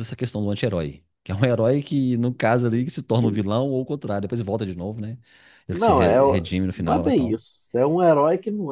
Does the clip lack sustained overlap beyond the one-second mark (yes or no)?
no